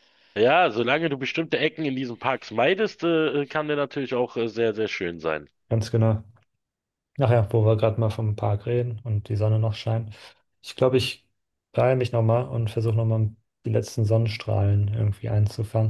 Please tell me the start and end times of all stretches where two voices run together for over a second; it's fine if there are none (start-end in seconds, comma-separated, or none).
none